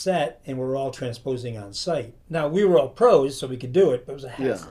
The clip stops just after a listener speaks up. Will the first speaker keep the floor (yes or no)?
yes